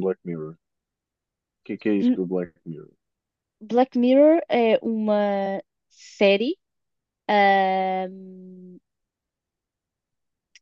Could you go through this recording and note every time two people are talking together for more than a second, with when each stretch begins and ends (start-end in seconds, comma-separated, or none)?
none